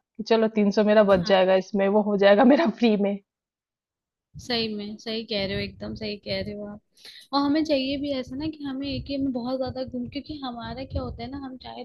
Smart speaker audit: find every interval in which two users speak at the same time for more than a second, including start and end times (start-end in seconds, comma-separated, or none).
none